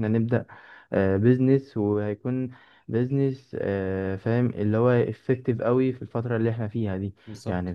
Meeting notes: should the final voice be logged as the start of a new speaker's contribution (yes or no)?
no